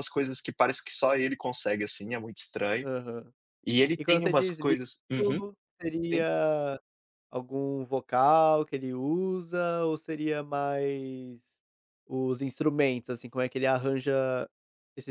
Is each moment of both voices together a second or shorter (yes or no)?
no